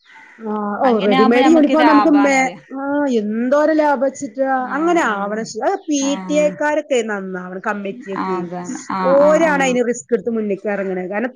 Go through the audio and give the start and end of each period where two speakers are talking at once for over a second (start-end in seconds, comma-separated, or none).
4.7-6.5